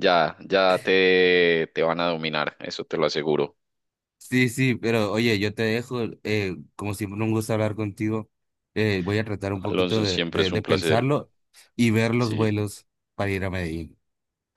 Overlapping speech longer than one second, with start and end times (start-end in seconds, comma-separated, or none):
9.7-11.1